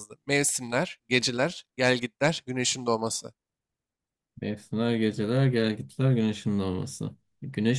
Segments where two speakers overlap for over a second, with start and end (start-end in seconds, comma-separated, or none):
none